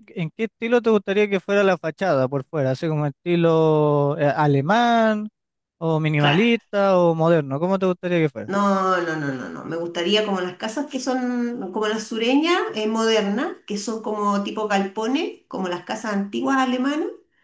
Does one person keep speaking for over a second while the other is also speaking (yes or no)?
no